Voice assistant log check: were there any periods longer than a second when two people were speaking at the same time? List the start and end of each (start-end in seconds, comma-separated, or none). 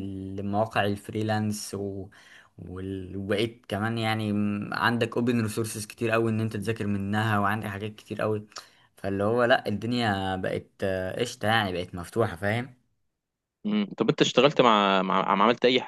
none